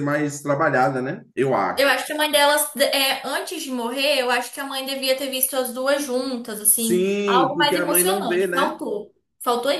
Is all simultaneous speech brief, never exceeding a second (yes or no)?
no